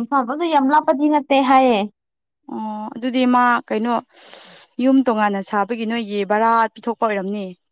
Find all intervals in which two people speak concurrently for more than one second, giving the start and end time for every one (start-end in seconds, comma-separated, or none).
none